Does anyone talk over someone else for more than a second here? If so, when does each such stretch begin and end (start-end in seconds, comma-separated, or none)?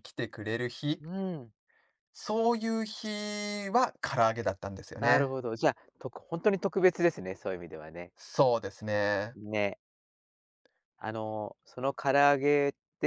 none